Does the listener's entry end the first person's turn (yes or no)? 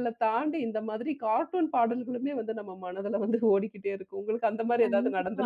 yes